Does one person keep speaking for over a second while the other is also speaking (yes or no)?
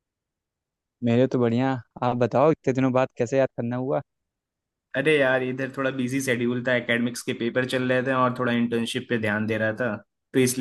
no